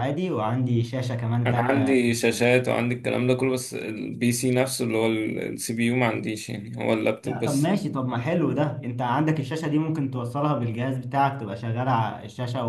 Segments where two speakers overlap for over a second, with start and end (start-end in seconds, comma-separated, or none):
none